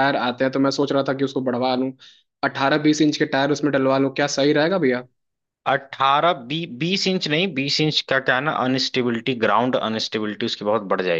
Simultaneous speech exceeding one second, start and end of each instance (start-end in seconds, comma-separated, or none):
none